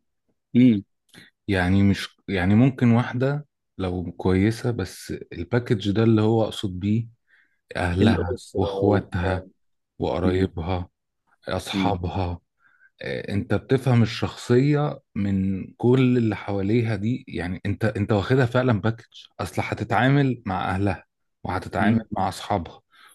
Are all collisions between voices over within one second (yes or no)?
no